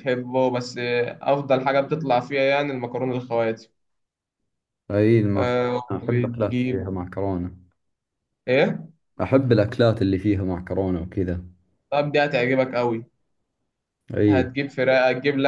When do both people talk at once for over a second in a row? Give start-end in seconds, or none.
5.3-6.9